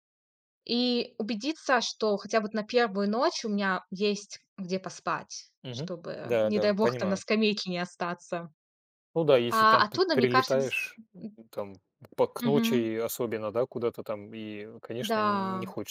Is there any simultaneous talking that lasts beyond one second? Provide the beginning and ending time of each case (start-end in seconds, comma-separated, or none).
5.6-7.2, 9.5-10.7